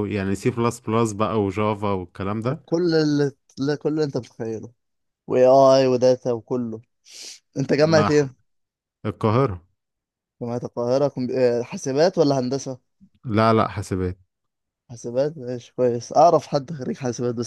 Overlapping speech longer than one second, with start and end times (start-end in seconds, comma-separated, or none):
none